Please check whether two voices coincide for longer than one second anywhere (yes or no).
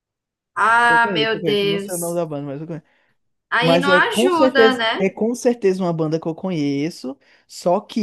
yes